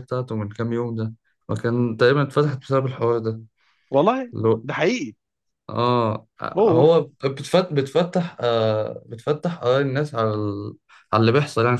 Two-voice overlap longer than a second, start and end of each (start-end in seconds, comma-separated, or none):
none